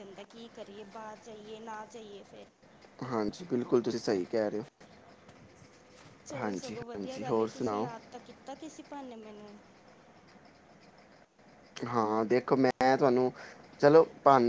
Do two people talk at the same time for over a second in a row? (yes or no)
yes